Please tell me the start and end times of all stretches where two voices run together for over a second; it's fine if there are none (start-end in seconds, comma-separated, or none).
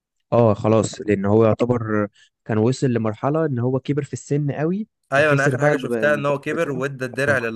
5.1-6.8